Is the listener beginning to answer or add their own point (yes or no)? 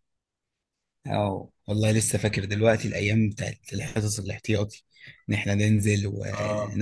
yes